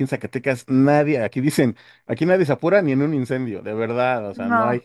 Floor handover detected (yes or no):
no